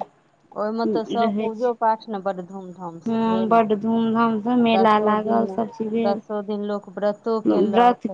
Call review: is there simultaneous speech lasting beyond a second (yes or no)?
yes